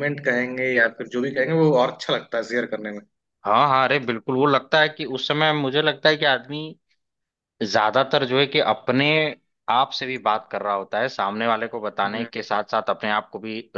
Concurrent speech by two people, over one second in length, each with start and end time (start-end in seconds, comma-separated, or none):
none